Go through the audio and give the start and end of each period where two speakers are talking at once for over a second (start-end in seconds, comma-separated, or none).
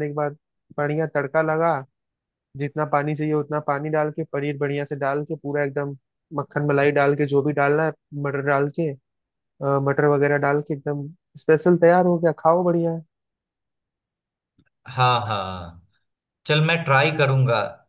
none